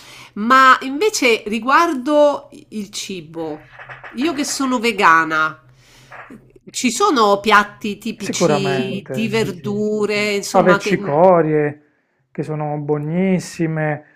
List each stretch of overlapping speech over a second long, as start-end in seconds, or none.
8.2-9.8